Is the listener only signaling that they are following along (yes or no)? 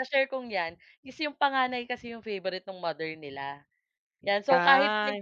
yes